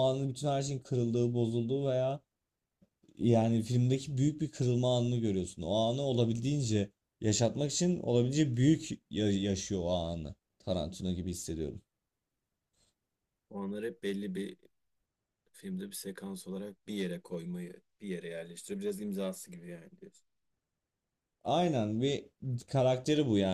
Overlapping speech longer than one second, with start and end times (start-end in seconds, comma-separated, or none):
none